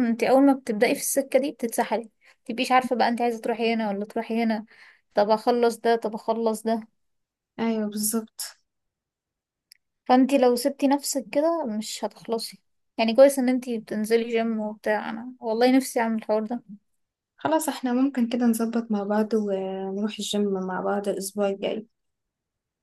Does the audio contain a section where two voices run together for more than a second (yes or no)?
no